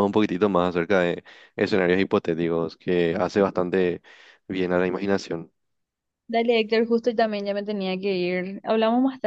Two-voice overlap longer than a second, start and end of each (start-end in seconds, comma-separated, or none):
none